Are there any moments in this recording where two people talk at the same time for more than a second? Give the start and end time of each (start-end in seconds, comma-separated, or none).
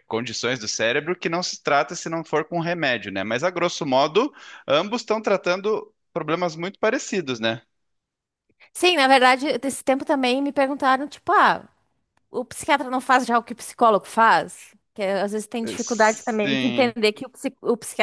15.6-16.9